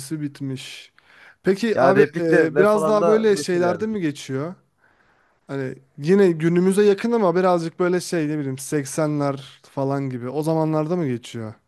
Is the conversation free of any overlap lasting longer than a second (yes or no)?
no